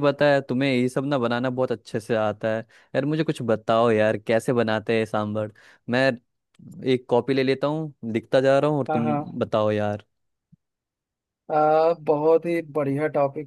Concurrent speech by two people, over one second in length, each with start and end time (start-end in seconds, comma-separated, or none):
none